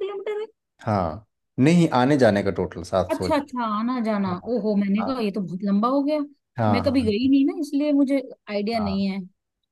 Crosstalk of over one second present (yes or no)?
no